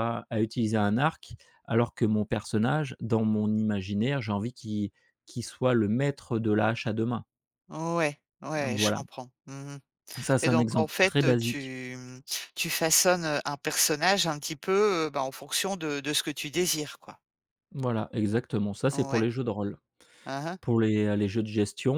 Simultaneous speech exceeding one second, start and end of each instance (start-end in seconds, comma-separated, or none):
10.4-11.7